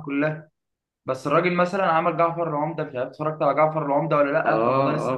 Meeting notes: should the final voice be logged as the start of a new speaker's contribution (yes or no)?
yes